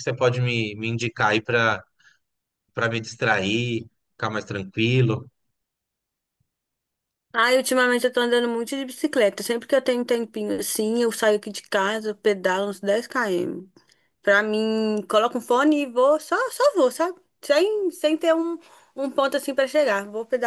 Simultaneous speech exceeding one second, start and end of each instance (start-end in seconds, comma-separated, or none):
none